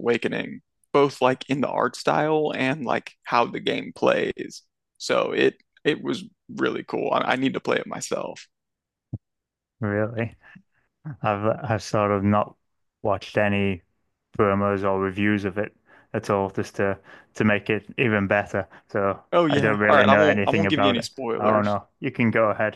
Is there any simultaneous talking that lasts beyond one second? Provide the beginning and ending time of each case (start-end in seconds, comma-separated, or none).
19.3-21.8